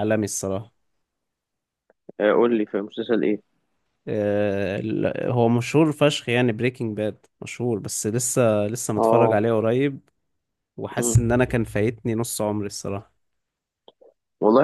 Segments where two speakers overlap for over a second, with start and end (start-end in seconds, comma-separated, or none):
none